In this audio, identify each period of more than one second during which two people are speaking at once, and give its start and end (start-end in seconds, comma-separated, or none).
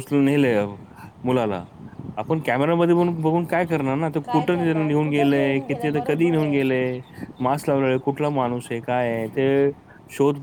4.3-6.8